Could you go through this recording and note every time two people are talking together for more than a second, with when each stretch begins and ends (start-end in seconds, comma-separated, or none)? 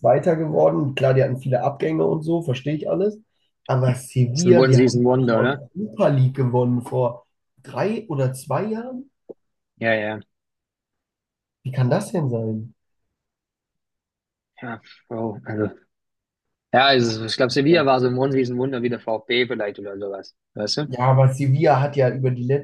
4.3-5.6